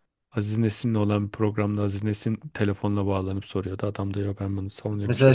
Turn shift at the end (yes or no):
yes